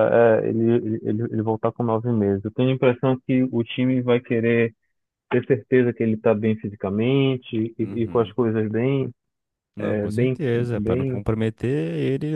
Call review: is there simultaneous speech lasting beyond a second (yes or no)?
yes